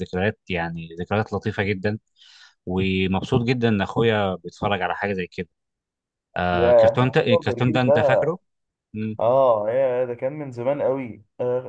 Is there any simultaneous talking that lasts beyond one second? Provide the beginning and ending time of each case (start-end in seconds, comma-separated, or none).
6.5-8.2